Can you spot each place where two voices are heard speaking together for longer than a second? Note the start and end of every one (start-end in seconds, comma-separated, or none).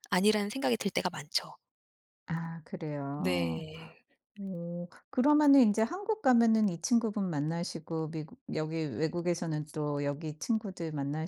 none